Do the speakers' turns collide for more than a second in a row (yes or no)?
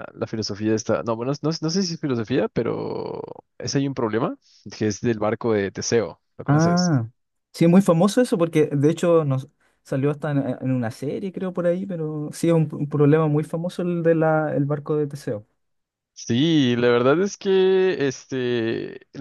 no